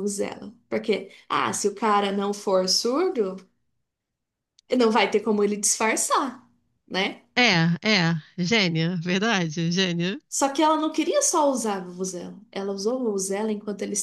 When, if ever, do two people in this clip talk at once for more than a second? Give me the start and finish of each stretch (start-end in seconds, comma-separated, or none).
none